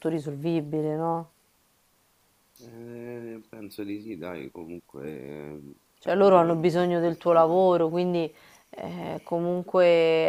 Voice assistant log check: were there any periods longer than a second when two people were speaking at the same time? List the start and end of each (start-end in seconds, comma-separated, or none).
6.0-7.7